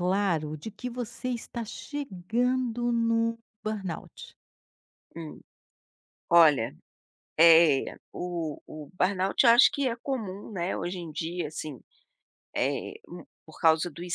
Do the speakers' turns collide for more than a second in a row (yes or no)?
no